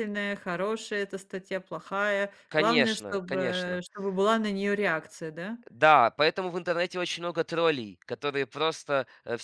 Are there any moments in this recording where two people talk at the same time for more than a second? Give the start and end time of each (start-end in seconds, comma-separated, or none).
2.5-3.8